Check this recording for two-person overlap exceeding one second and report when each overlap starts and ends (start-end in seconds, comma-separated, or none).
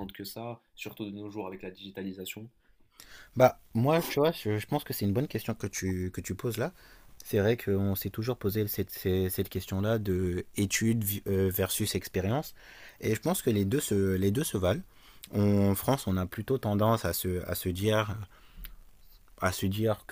none